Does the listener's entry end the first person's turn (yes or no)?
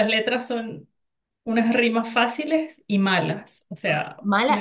yes